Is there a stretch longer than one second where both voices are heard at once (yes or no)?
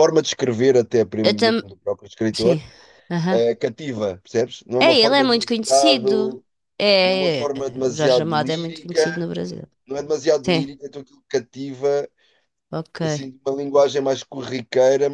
yes